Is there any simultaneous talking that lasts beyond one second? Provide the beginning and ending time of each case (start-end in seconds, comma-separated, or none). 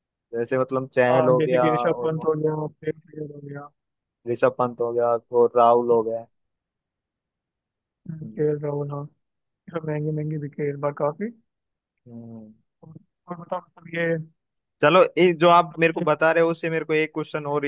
1.1-2.3